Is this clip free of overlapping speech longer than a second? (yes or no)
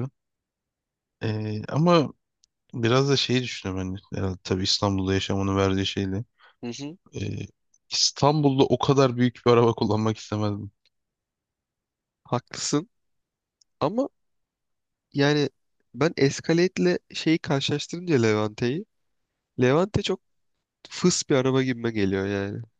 yes